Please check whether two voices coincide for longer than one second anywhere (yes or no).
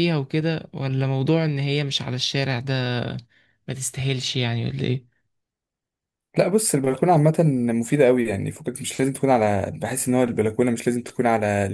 no